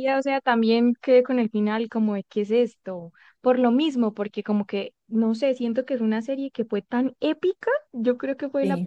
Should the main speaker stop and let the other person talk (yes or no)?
no